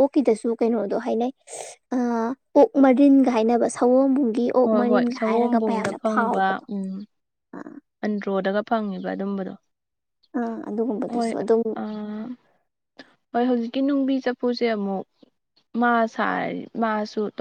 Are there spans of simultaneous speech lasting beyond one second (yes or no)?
yes